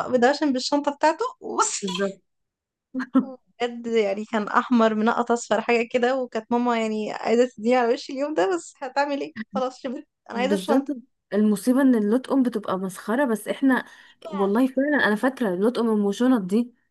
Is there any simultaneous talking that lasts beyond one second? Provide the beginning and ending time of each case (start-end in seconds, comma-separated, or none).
none